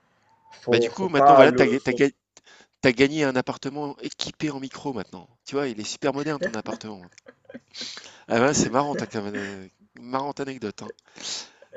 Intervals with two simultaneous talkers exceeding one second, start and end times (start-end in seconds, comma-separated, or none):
0.7-2.0